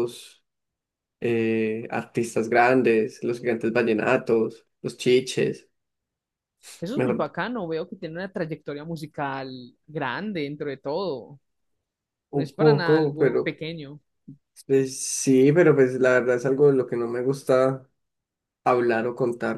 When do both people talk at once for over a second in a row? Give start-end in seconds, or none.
12.3-13.6